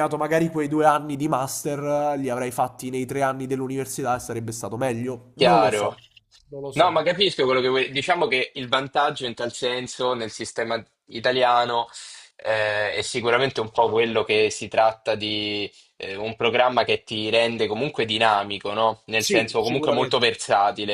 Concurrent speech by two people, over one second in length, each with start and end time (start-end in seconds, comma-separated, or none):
19.1-20.4